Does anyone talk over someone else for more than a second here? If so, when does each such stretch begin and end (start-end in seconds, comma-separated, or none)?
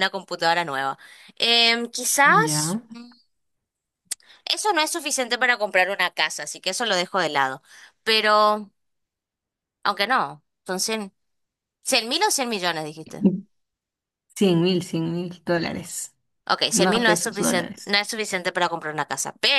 16.7-18.0